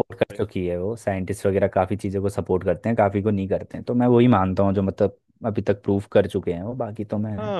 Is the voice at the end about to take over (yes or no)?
yes